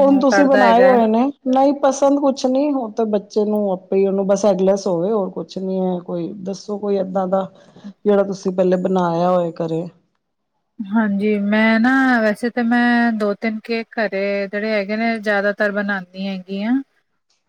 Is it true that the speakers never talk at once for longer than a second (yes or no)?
yes